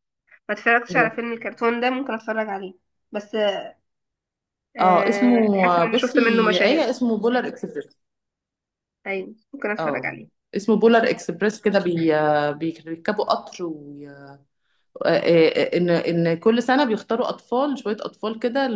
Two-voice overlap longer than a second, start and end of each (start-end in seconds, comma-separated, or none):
4.8-6.9